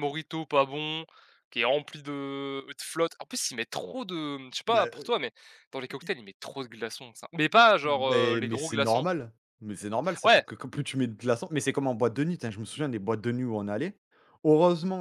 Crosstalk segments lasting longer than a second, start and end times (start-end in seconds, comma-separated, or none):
7.8-9.1